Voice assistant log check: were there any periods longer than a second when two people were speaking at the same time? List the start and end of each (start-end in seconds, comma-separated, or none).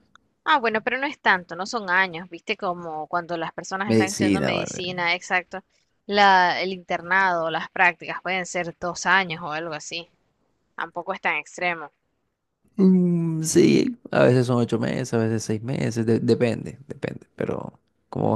3.9-5.1